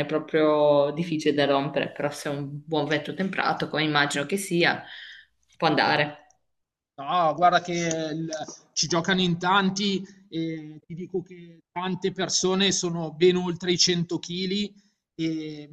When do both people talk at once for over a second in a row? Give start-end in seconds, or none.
none